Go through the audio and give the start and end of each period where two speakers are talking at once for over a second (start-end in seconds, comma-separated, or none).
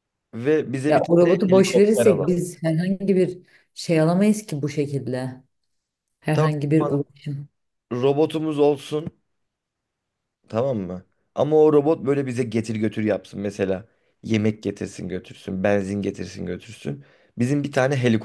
0.9-2.3